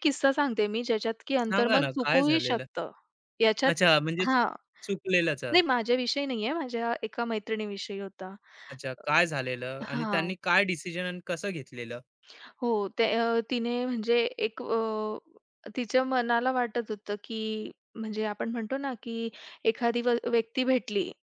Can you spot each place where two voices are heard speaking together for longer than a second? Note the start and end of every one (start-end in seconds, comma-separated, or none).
1.4-2.6